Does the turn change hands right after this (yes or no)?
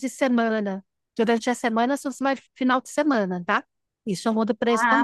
yes